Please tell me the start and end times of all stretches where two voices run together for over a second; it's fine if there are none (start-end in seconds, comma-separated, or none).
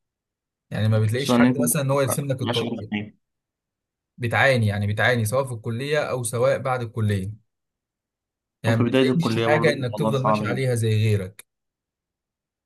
8.7-10.7